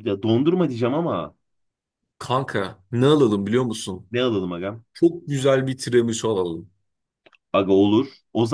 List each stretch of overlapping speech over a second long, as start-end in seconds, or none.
none